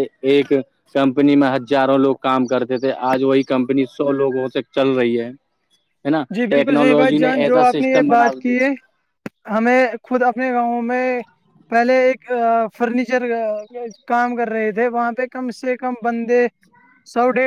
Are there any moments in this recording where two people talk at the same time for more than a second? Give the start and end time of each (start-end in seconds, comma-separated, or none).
6.3-8.5